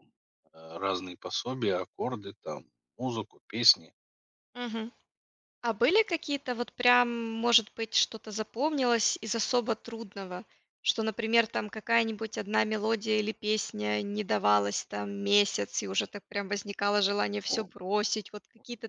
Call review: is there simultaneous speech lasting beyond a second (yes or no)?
no